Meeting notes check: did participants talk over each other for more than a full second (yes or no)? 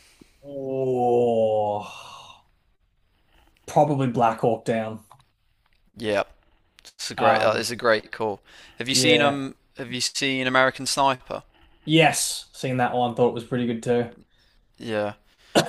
no